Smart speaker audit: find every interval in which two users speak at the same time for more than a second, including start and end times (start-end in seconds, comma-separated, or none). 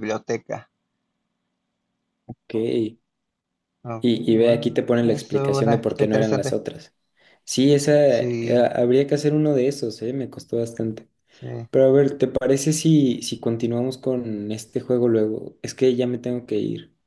4.0-6.6